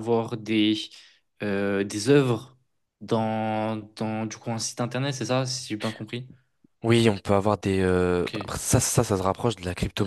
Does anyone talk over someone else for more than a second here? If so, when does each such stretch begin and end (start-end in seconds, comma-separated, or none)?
none